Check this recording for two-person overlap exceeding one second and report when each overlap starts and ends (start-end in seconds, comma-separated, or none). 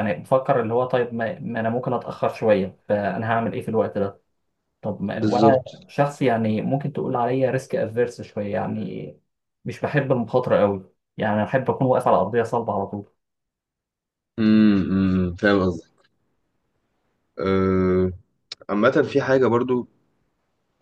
none